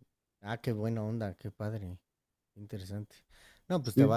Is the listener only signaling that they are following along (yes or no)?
yes